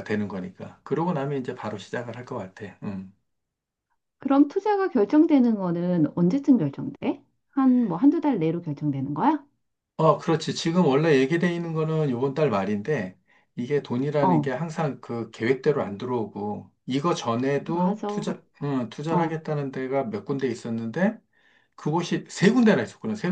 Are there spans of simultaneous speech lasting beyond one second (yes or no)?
no